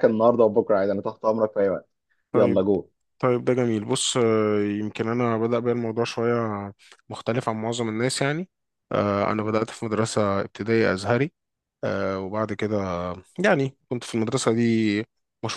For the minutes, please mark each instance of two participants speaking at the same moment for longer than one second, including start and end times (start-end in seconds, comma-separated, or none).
none